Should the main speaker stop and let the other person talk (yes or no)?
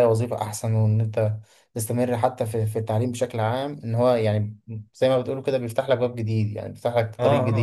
yes